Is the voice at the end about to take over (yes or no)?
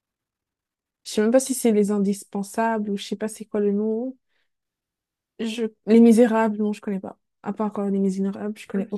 yes